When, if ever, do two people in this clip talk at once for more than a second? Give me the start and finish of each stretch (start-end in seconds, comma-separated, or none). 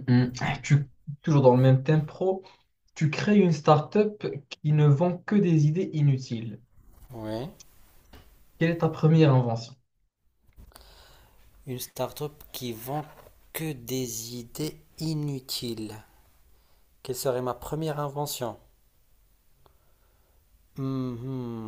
none